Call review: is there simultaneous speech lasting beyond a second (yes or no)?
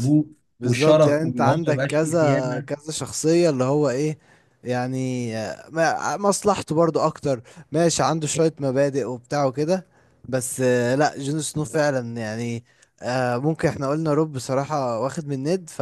yes